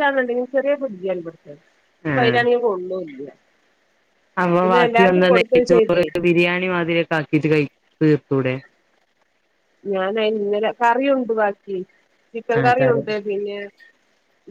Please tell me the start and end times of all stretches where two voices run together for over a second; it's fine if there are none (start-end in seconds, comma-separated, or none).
4.6-6.0